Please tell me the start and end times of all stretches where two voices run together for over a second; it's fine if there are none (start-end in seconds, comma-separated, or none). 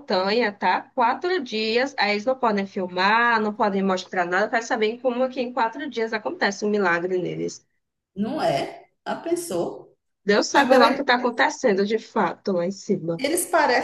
none